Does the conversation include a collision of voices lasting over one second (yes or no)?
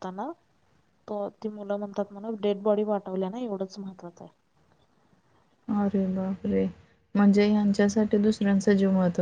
no